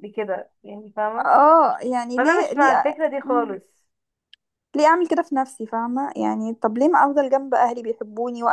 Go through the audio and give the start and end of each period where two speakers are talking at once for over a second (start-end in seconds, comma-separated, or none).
2.2-3.5